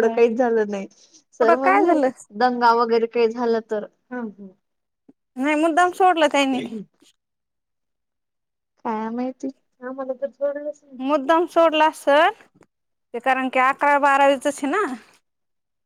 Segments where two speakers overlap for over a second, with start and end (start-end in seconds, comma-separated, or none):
none